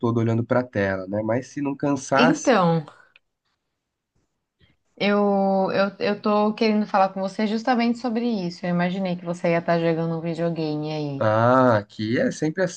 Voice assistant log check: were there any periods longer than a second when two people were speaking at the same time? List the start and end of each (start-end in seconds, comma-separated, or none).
none